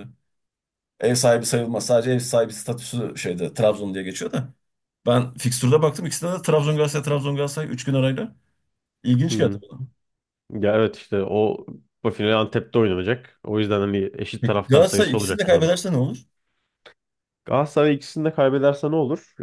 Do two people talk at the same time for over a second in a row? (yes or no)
yes